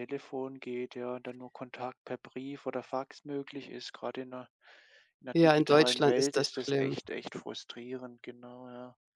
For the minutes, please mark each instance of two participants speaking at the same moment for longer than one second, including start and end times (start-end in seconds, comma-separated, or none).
5.3-7.0